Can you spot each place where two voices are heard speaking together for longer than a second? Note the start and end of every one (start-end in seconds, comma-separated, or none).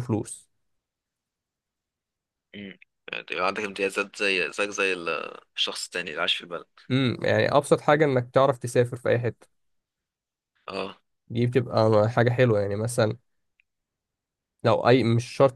none